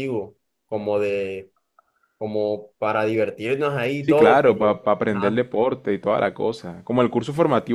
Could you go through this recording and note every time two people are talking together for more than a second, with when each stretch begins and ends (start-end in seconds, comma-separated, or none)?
4.0-5.4